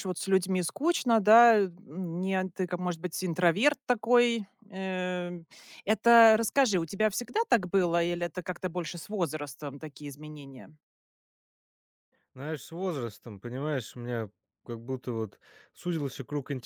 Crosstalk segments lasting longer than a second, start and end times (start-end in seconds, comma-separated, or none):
none